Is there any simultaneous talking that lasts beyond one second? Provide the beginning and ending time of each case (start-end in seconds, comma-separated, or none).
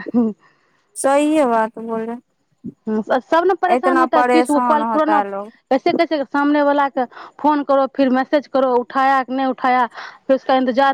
3.7-5.2